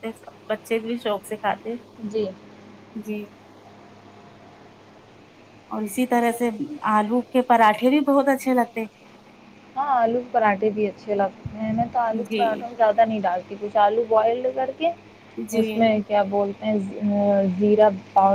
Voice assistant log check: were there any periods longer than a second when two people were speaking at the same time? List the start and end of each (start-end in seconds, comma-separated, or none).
none